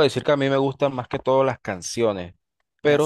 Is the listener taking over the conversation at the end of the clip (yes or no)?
no